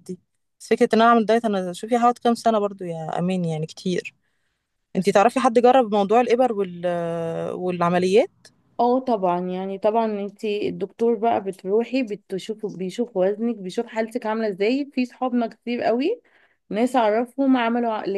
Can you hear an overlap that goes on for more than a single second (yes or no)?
no